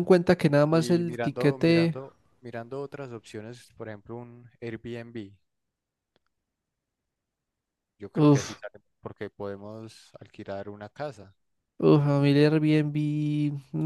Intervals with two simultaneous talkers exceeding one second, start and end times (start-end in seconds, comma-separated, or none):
0.7-2.0